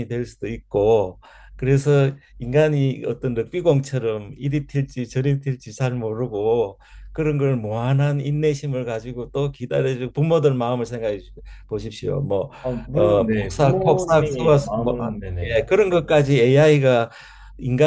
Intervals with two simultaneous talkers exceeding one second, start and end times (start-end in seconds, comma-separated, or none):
12.9-15.6